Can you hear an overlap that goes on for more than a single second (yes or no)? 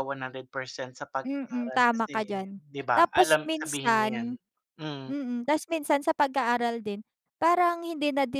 yes